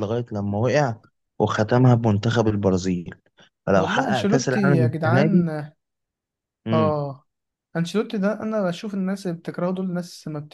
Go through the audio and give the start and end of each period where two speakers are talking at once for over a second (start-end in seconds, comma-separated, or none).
3.8-5.5